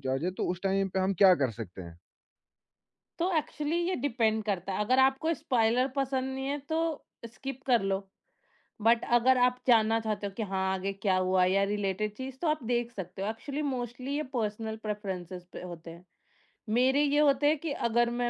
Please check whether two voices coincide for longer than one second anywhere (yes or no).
no